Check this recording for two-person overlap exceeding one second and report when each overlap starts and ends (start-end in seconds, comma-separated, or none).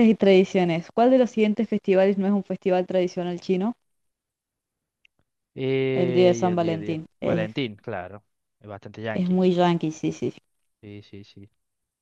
5.9-7.5